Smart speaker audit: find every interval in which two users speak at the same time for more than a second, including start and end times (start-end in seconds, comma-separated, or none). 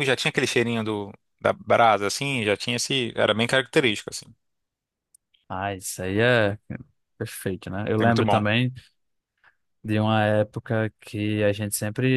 none